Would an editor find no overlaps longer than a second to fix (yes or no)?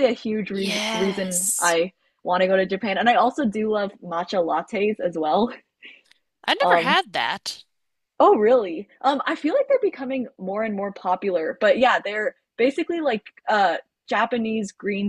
no